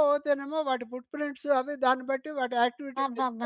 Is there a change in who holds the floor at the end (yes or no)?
yes